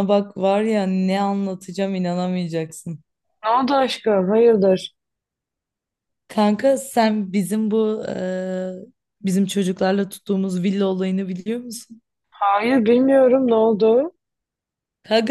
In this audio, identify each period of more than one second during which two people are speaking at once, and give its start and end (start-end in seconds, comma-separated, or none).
none